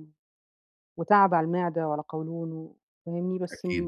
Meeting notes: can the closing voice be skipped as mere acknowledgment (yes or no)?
yes